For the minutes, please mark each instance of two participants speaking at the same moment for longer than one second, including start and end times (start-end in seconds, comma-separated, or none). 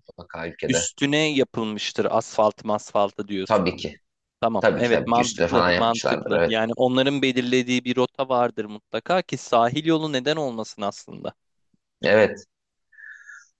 4.6-6.6